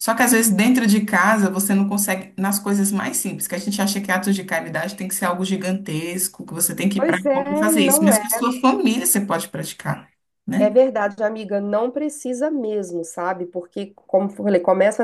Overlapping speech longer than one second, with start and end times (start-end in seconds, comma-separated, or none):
7.0-8.2